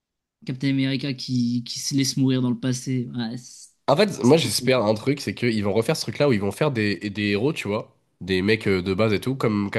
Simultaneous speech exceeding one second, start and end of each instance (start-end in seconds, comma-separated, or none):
none